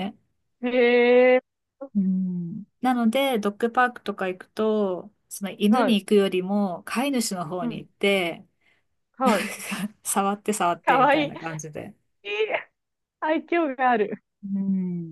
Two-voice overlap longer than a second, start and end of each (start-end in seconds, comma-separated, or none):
none